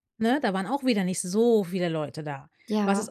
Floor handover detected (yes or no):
no